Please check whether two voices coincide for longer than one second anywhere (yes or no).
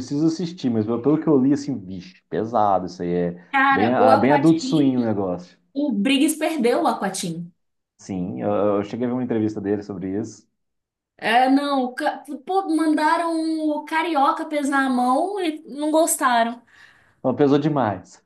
yes